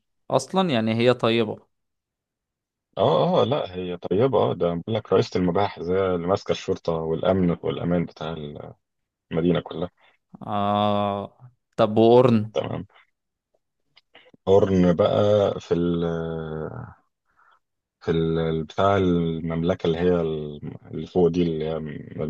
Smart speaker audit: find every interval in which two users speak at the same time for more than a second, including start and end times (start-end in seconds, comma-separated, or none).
none